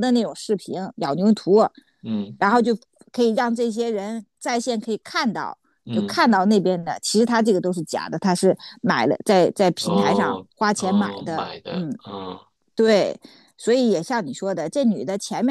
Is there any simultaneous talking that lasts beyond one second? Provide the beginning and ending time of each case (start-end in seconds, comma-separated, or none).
9.8-12.0